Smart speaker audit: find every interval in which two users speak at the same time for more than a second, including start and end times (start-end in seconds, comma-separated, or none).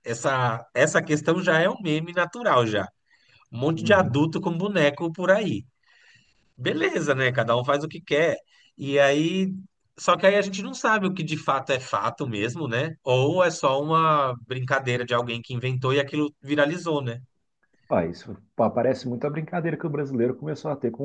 none